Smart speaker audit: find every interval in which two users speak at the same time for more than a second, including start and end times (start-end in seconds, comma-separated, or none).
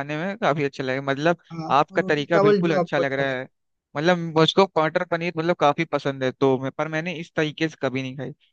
1.8-3.4